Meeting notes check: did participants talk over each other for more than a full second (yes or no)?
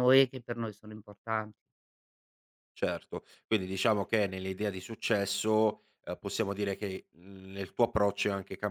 no